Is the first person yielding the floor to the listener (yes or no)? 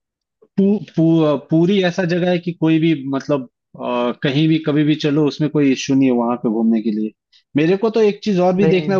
no